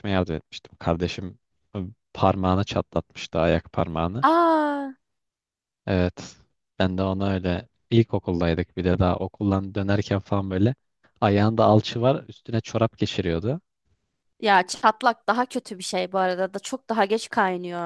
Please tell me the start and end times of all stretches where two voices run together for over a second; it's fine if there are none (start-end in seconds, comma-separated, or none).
none